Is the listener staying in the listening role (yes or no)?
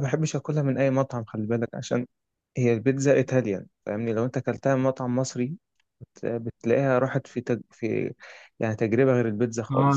no